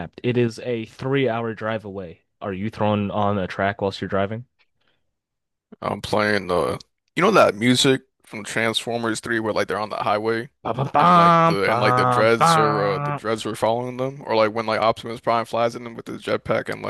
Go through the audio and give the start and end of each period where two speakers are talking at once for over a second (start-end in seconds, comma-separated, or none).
11.0-13.2